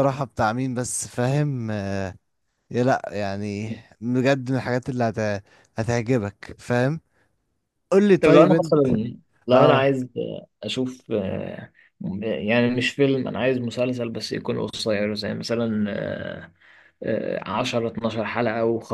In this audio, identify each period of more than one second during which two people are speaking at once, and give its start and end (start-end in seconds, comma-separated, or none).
none